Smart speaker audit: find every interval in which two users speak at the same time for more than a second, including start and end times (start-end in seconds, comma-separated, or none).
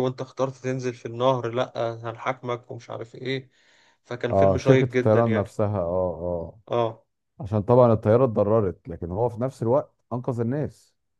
4.3-5.6